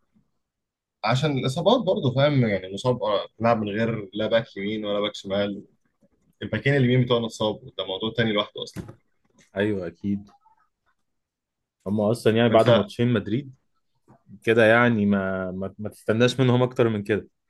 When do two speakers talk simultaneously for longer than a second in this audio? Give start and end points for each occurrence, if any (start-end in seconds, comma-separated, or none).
none